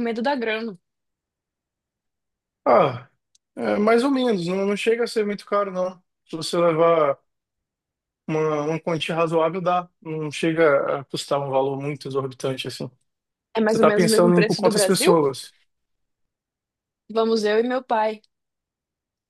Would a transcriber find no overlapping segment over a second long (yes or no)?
no